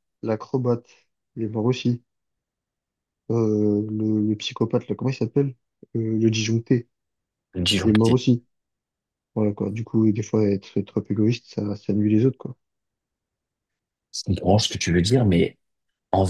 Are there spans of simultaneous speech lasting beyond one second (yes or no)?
no